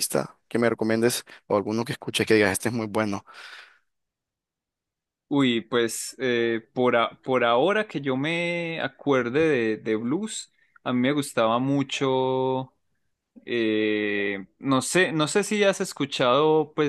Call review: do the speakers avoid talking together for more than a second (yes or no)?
yes